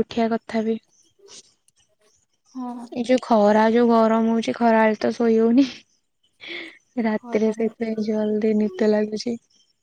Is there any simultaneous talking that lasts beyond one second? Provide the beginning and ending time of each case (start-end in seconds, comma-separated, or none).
7.2-8.8